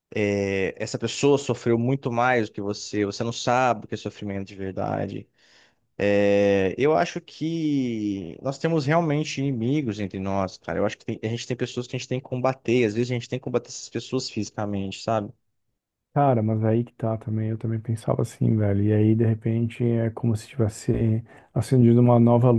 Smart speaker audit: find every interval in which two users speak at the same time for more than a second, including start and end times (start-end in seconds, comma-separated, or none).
none